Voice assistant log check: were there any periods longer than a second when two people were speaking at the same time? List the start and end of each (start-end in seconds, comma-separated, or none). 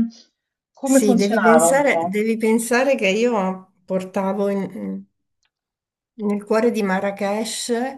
0.8-2.2